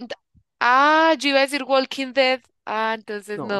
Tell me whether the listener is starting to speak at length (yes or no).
yes